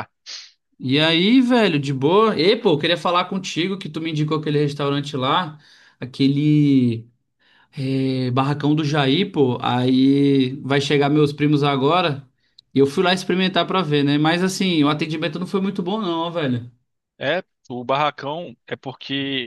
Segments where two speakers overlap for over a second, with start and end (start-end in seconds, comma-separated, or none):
none